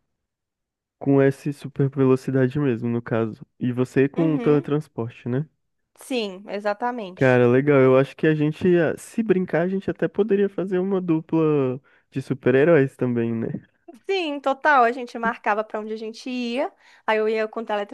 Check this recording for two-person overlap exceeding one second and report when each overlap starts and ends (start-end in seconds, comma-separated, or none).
none